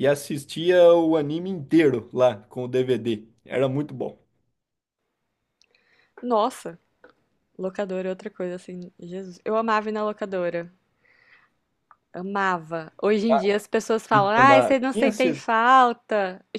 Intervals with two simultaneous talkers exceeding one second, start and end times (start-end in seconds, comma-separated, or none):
14.1-15.4